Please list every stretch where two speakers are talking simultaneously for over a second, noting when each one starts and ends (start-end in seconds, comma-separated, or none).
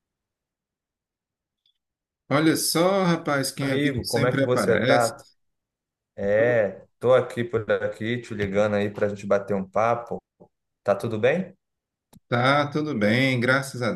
3.6-5.1